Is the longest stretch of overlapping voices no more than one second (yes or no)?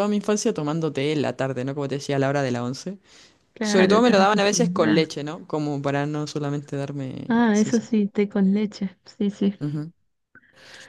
no